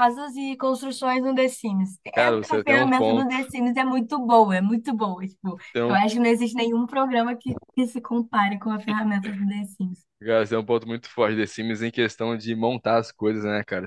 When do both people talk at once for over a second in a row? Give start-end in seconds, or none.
2.1-3.4